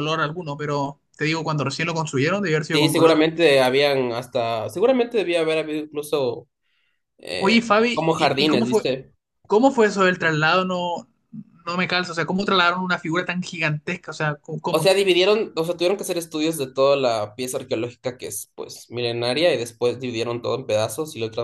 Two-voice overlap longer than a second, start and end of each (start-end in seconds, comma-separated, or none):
7.4-8.8